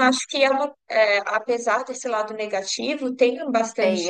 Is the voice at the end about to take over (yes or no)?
yes